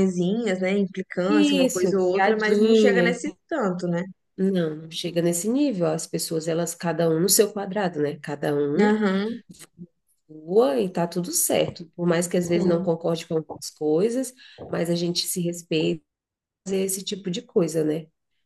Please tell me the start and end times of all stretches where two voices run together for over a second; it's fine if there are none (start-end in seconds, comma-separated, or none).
1.3-3.1